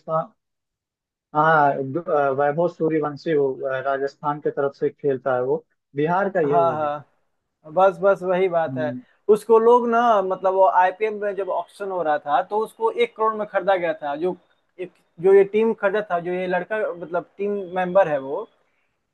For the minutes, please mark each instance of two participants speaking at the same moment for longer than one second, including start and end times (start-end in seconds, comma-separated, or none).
none